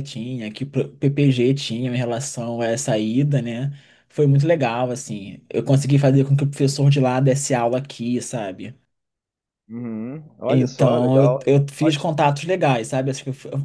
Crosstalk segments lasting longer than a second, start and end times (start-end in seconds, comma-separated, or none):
10.5-12.1